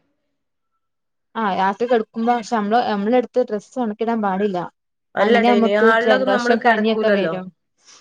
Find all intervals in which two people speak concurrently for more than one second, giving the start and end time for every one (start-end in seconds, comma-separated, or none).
5.2-7.3